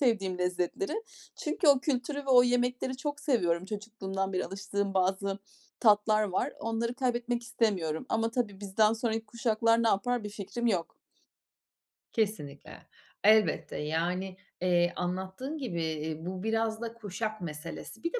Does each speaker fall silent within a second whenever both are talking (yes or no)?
yes